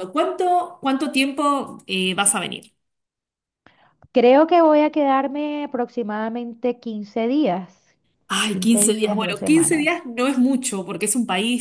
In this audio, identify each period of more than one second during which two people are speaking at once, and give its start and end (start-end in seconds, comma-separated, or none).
8.5-10.0